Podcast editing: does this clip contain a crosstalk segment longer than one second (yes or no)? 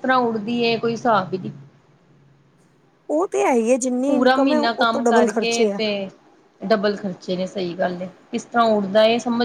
yes